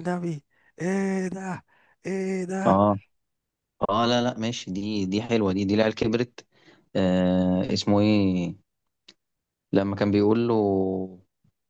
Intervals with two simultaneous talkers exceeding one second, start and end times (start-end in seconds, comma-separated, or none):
none